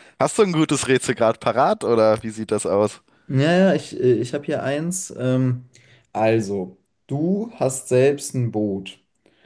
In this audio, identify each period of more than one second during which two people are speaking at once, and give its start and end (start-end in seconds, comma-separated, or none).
none